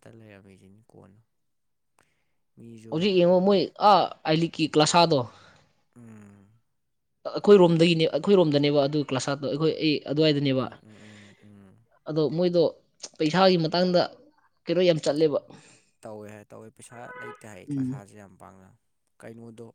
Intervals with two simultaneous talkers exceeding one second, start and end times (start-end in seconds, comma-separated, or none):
none